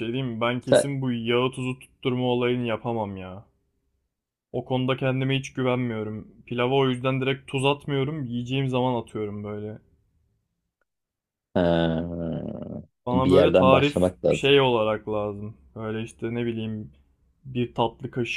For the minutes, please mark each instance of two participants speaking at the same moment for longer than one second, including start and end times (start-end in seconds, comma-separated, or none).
13.1-14.6